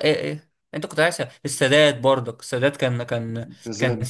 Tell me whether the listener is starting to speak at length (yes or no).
no